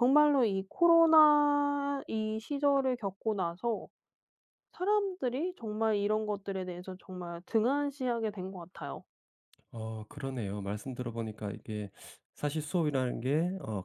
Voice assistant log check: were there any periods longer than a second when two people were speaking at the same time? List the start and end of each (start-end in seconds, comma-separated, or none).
none